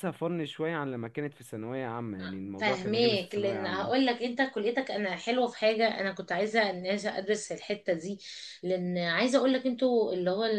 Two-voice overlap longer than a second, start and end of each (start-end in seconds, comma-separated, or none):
2.6-4.1